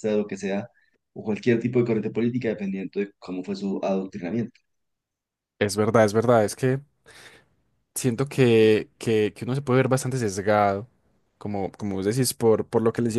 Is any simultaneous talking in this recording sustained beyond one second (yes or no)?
no